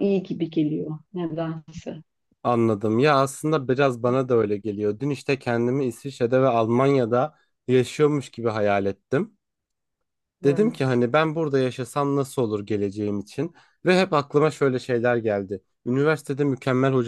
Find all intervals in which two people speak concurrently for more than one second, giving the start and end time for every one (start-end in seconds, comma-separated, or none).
none